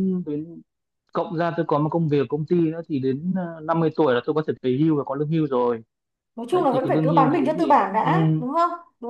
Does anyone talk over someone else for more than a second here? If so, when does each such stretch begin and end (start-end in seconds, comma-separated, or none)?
6.5-8.1